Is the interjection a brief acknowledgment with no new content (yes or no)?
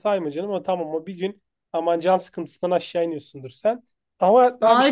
no